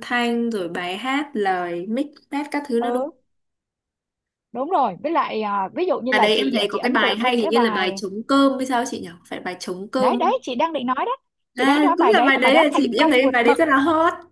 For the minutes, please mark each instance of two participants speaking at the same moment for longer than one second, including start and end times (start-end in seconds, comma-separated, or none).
6.1-8.0, 11.6-13.6